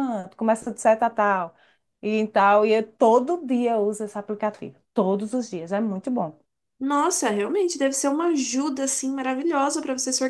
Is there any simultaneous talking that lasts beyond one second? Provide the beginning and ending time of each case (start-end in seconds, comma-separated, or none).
none